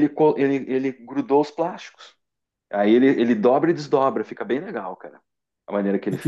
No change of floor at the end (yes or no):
no